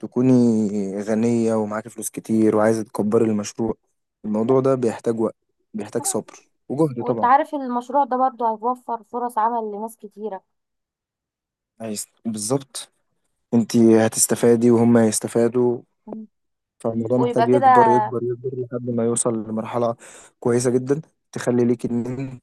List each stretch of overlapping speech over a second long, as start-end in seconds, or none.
none